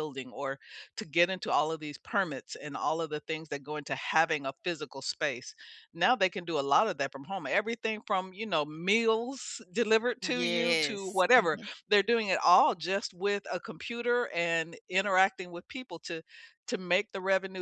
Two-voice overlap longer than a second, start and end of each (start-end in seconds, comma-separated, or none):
10.2-11.7